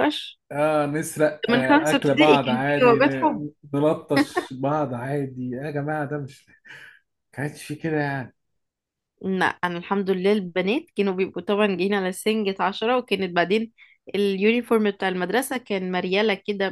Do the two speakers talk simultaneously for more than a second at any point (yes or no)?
yes